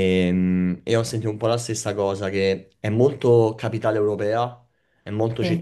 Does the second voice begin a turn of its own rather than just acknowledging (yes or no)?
no